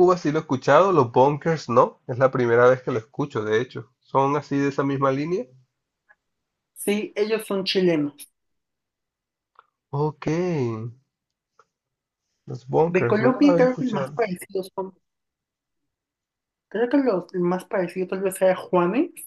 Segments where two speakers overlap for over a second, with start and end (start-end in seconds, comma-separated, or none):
12.9-14.2